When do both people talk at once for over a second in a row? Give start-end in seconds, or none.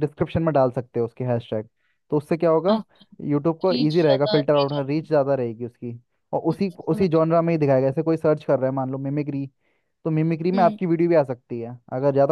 3.4-5.1